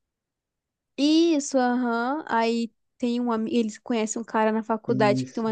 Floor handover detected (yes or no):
no